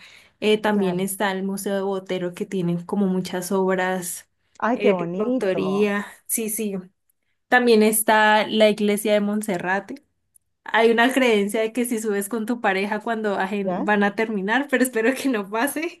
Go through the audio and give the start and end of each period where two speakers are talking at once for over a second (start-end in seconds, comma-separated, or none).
4.7-5.9